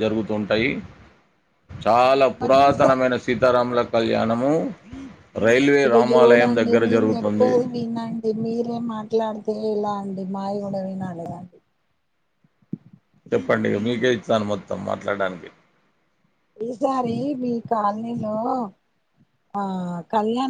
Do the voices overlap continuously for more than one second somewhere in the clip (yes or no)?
no